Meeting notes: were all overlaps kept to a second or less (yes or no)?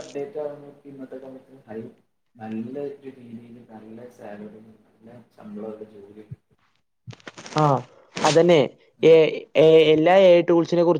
yes